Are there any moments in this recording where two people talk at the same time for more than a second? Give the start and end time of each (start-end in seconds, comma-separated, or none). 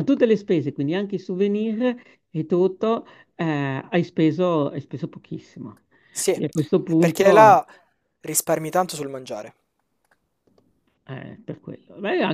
6.3-7.6